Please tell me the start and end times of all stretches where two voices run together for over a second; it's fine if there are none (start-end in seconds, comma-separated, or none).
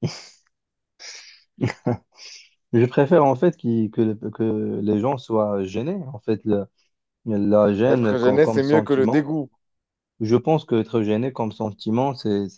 7.8-9.3